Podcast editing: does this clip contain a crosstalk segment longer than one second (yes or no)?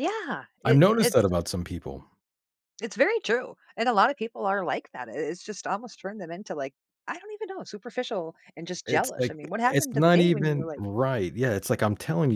yes